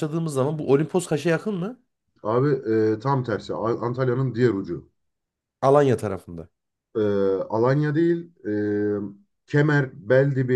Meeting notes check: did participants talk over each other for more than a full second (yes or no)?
no